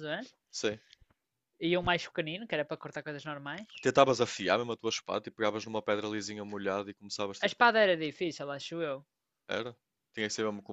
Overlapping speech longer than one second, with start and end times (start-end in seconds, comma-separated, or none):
none